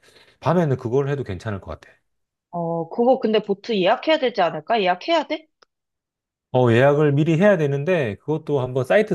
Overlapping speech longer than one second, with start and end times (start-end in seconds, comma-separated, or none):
none